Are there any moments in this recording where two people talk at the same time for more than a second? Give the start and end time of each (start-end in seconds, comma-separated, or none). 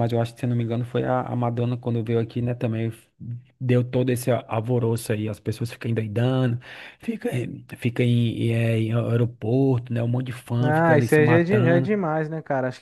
10.6-11.9